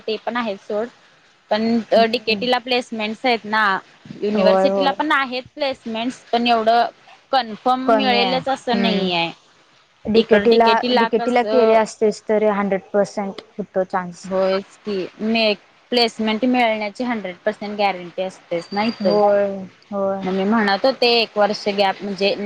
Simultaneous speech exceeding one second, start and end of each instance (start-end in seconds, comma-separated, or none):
10.2-11.8